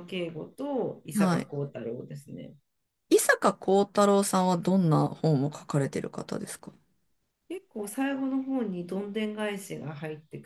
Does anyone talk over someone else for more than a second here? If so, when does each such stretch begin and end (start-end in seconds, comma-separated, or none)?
none